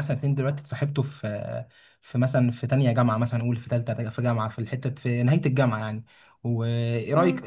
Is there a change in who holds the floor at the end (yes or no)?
no